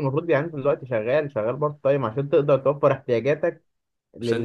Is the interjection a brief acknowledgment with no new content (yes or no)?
yes